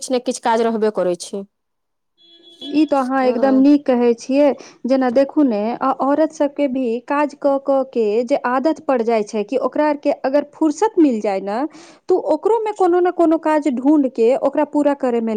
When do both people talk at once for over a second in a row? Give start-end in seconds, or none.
none